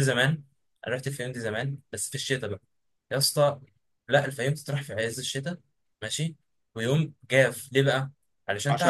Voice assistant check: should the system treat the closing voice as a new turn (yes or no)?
no